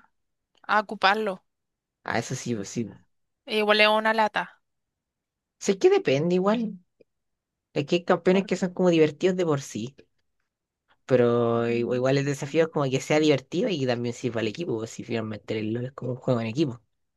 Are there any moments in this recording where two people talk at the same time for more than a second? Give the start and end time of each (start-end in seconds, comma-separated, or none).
none